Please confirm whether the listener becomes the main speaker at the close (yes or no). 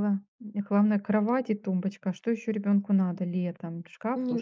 yes